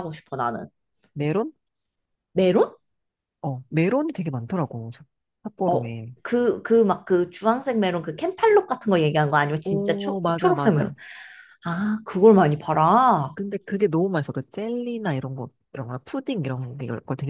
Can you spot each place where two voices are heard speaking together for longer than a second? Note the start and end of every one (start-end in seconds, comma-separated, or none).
9.6-10.9